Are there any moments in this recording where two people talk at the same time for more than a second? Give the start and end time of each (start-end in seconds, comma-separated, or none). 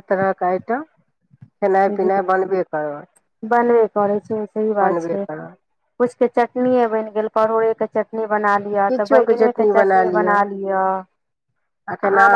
none